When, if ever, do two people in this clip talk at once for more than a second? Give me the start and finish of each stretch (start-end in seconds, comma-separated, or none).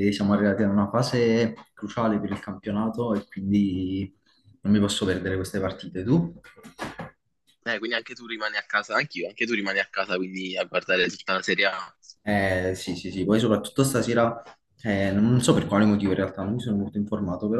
none